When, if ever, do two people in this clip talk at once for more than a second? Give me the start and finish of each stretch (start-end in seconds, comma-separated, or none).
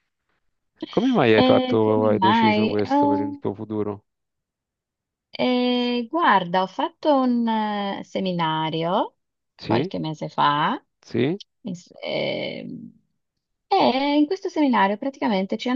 1.3-3.4